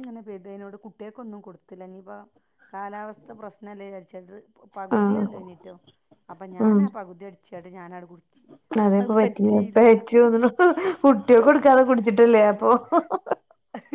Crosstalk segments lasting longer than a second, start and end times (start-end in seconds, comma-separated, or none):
none